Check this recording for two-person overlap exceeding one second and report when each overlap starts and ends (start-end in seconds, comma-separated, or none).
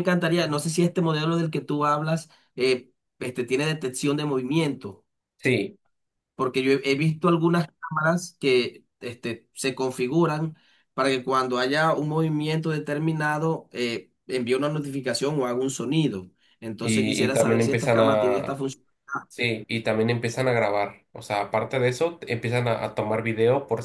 16.8-18.6